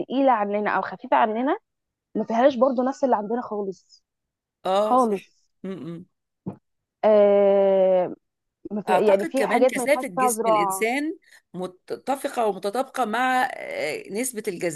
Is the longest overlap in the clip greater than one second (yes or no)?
yes